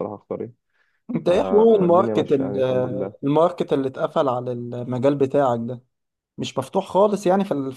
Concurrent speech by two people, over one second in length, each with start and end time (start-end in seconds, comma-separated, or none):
1.3-2.6